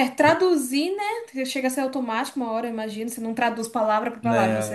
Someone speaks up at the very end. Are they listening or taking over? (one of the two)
listening